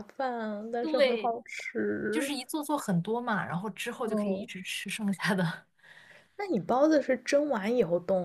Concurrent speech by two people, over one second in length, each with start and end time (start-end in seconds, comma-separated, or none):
none